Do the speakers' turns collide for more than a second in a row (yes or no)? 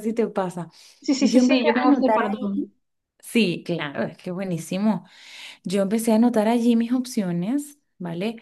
yes